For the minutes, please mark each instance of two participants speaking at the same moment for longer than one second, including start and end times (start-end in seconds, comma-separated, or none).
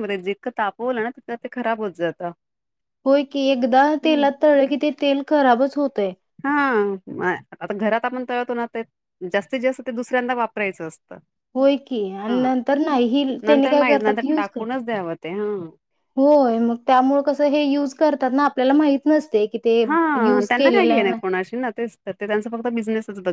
13.5-14.8